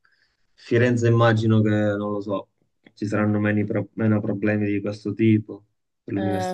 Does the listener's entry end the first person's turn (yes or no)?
yes